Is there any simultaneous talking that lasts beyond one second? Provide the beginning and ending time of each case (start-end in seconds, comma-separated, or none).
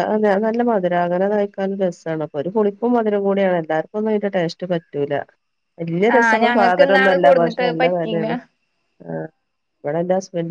6.2-8.3